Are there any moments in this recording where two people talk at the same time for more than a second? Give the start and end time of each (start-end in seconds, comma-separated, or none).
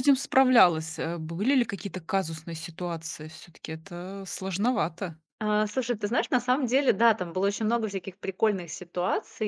none